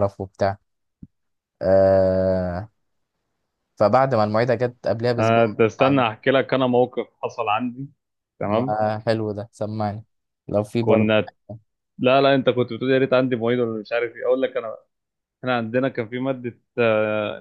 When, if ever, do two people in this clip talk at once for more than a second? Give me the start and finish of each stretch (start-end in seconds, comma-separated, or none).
none